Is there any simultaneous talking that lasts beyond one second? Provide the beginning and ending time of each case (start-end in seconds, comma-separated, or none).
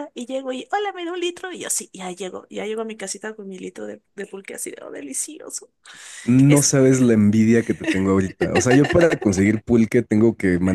none